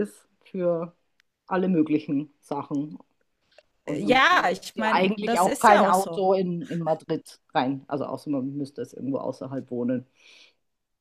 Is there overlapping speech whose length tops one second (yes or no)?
yes